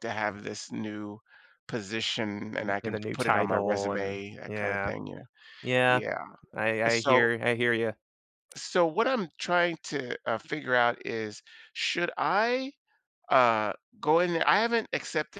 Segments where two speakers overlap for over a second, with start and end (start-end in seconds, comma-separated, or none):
2.6-4.9